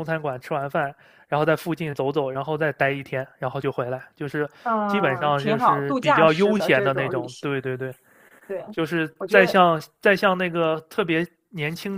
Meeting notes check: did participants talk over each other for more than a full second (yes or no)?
yes